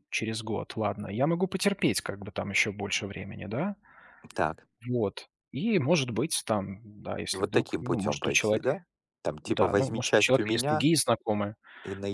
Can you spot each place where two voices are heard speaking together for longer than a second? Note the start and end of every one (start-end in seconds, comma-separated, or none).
7.3-8.7, 9.4-10.9